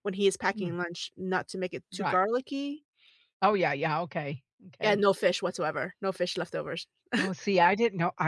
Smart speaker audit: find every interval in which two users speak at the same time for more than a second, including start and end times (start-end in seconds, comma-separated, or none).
none